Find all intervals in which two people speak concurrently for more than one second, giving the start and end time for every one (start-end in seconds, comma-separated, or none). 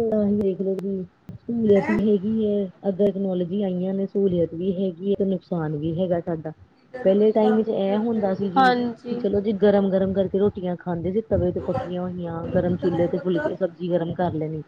7.0-8.7